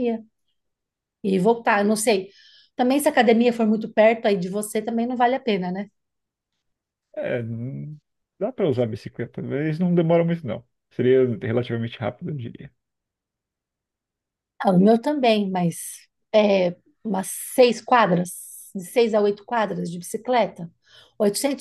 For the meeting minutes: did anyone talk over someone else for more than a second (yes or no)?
no